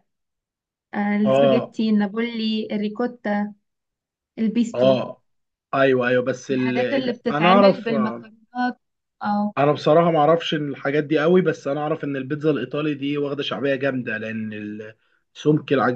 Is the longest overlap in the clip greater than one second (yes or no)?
yes